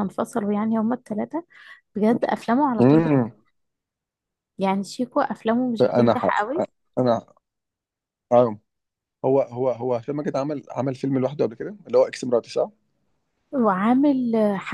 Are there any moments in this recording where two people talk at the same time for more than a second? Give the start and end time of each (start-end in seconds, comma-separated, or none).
none